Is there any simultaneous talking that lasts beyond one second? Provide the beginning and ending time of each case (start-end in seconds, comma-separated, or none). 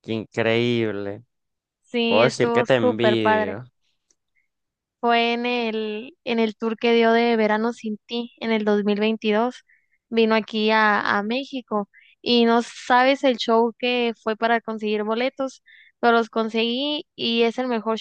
2.0-3.6